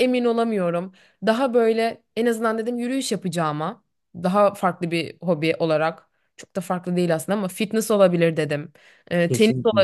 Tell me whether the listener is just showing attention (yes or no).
yes